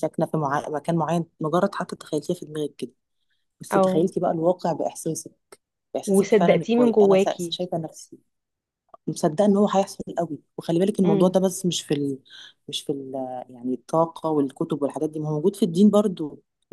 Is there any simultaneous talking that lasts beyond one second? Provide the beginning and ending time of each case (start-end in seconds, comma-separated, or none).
6.1-7.6